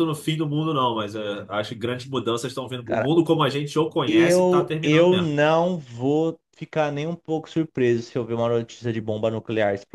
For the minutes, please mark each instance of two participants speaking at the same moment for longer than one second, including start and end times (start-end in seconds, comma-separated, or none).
4.1-5.3